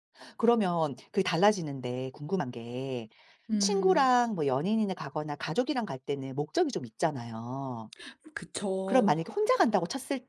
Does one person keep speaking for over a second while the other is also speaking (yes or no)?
no